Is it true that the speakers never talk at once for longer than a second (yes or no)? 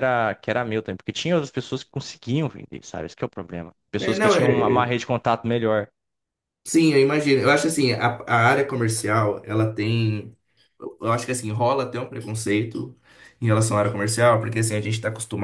yes